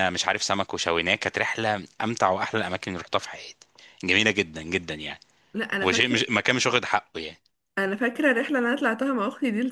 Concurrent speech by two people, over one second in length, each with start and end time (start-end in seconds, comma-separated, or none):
none